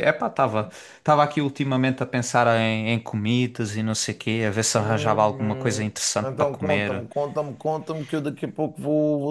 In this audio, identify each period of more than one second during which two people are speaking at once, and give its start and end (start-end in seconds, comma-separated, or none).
4.8-7.0